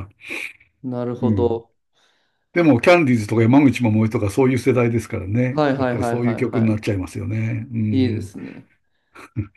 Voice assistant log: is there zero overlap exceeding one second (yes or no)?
no